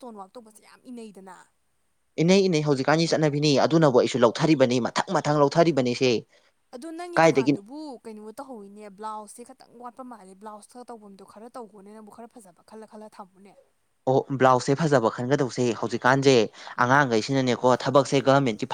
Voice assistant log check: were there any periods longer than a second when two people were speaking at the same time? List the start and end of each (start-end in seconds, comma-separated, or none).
none